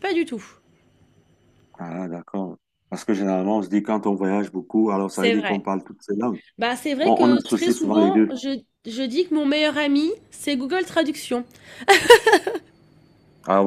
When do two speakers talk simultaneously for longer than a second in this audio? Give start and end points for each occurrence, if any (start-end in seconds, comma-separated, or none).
7.0-8.3